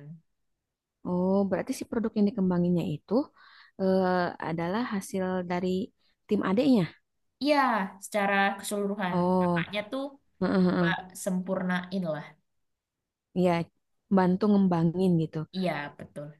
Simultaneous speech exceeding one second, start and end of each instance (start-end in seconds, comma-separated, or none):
none